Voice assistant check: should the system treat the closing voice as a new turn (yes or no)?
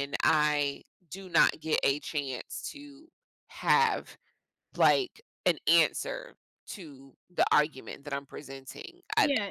yes